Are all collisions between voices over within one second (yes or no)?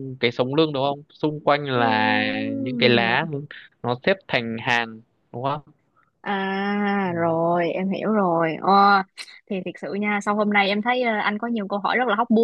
no